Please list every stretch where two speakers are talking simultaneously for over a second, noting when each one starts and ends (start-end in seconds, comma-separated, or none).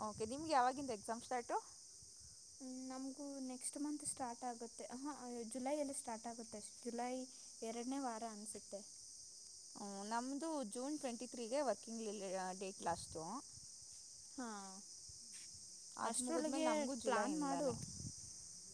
16.1-17.7